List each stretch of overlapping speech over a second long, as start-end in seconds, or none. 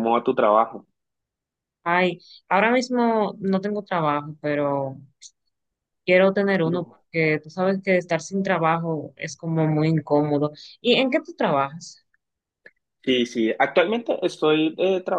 none